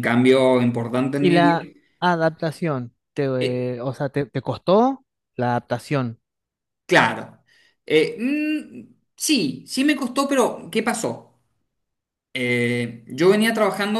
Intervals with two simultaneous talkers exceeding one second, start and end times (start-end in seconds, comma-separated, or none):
none